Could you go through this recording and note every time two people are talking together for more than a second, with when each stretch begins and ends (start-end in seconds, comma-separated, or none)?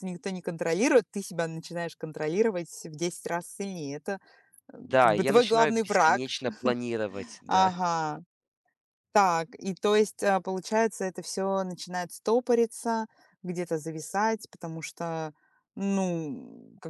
4.8-6.2